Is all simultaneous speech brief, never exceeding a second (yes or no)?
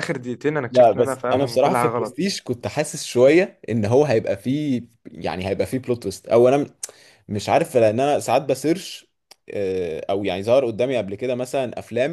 no